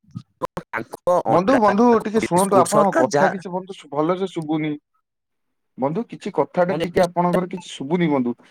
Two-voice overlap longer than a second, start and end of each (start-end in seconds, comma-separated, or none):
1.3-3.3